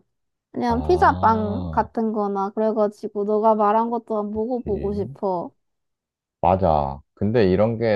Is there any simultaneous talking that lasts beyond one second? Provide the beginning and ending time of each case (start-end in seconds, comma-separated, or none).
0.7-1.9